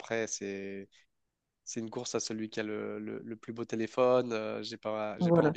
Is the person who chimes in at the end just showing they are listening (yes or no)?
yes